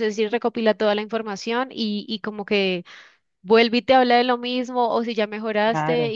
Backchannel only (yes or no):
yes